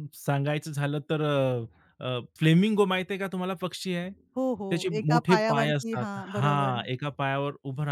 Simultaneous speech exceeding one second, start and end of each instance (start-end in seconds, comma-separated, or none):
4.7-6.8